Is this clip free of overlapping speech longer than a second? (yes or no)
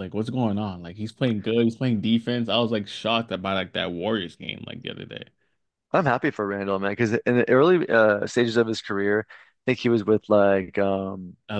yes